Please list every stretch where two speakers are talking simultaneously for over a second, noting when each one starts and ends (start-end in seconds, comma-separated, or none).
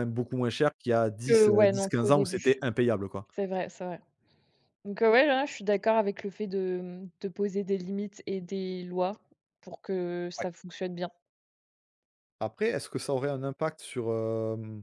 1.3-2.6